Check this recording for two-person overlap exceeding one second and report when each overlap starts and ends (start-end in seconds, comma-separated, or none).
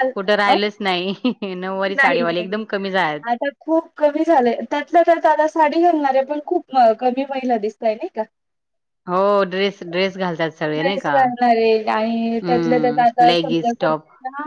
12.4-13.9